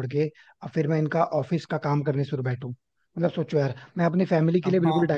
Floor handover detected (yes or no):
yes